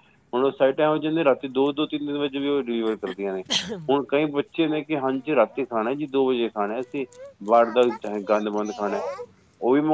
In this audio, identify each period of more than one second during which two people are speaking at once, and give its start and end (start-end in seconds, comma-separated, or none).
7.6-9.0